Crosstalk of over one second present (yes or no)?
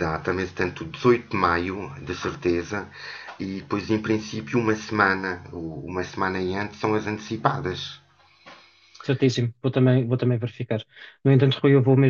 no